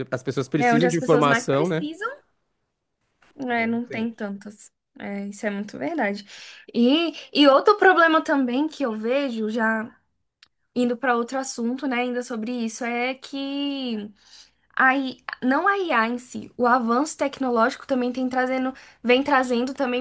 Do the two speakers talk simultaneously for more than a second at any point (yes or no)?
yes